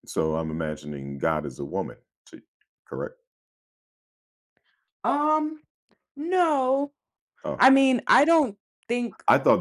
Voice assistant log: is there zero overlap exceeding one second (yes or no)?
yes